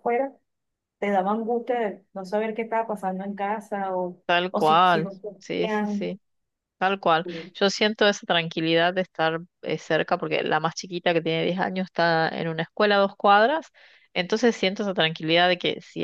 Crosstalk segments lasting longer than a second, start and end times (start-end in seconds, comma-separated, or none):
4.3-6.1